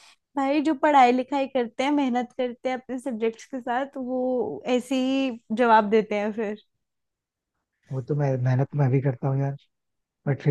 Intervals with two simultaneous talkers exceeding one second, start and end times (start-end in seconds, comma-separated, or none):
none